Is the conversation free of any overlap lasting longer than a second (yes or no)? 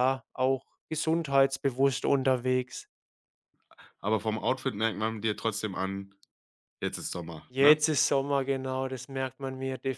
yes